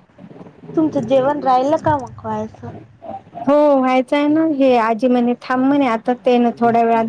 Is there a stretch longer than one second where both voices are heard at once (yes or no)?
no